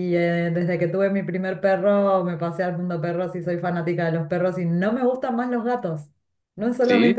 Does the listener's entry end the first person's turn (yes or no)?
no